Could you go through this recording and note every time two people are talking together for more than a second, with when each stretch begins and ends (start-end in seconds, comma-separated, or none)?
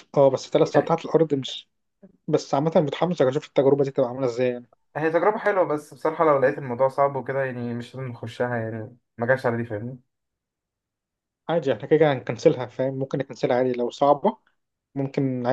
none